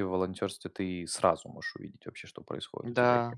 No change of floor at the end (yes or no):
no